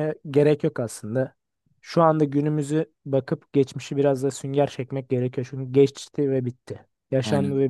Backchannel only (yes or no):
no